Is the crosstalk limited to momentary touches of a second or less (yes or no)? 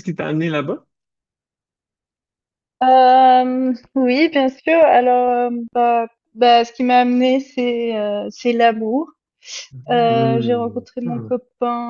no